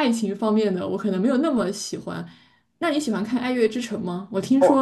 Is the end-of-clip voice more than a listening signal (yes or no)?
no